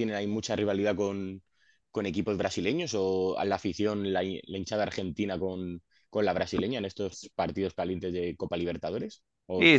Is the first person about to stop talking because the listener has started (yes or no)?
yes